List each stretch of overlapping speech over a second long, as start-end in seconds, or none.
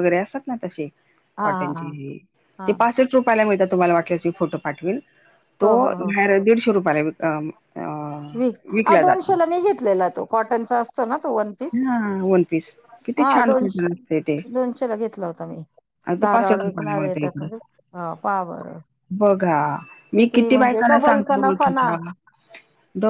16.2-17.5, 20.5-21.9